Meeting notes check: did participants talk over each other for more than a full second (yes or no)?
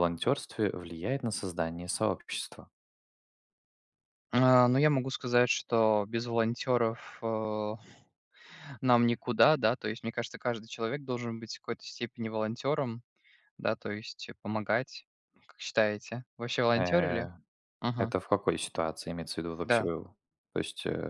no